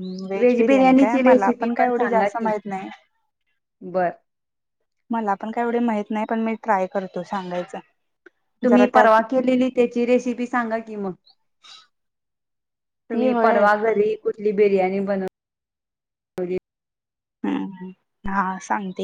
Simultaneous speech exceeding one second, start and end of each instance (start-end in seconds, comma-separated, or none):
0.7-2.5